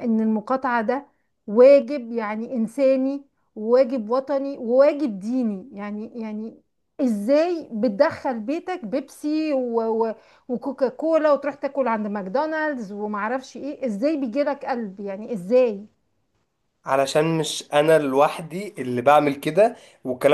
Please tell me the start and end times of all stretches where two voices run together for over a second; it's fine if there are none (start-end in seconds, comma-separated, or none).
none